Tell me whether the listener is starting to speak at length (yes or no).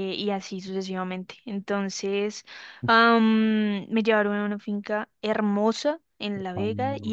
no